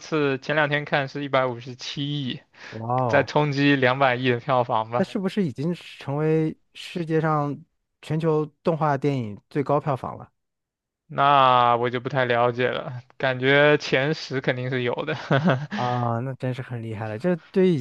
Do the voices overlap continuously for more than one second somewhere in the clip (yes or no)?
no